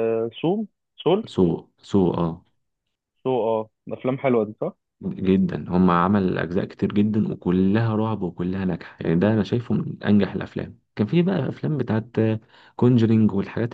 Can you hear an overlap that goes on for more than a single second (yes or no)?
no